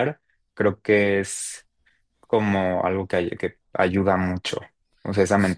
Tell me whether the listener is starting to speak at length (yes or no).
yes